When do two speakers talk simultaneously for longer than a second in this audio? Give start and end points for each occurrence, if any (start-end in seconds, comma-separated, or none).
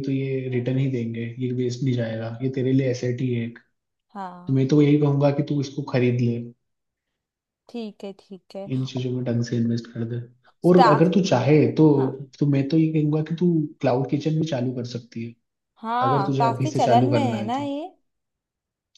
16.1-17.7